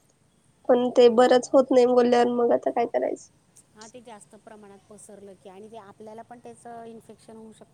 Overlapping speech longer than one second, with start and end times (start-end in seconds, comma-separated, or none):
none